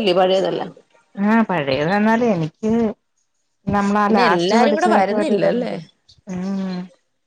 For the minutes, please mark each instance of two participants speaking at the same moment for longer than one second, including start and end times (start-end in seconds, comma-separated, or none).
4.1-5.7